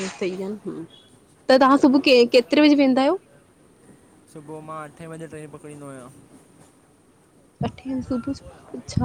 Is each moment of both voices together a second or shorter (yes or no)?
yes